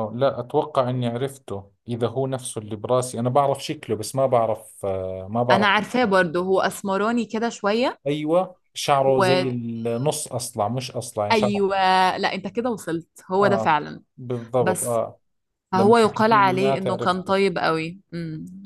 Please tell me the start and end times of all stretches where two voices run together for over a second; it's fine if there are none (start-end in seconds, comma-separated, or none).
15.7-17.4